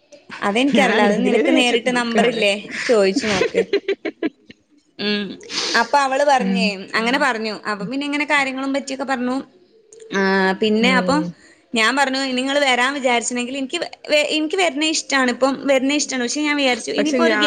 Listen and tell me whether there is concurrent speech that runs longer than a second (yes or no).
yes